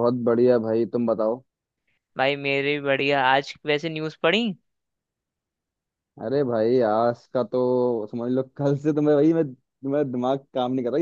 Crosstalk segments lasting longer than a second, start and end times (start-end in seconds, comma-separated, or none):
none